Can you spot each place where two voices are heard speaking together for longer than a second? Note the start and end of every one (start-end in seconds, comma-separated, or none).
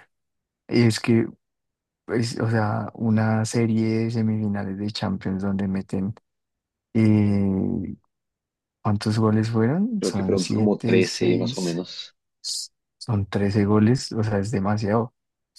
10.0-11.8